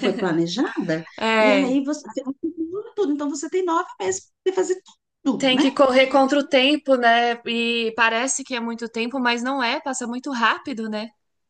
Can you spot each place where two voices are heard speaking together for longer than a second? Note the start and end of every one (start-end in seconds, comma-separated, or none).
none